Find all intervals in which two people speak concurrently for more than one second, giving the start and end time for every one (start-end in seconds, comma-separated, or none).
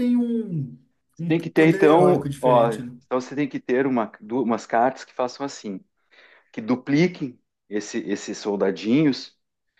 1.3-3.0